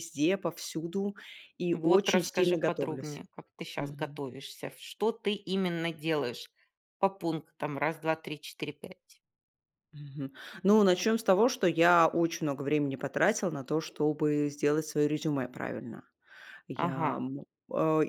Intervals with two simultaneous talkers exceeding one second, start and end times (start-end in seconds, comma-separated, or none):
1.7-3.2